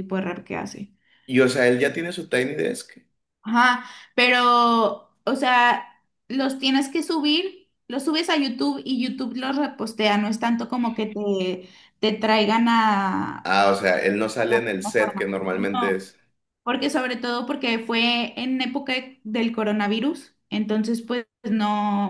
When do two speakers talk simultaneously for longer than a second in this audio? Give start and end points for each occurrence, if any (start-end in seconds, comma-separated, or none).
14.4-16.1